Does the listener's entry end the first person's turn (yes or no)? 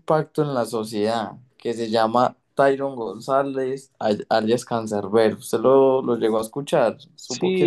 yes